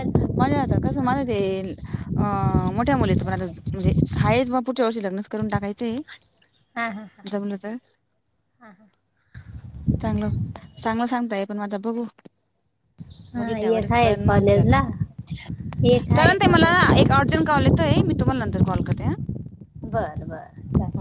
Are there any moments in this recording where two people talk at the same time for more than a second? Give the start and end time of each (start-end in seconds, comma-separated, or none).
13.4-14.7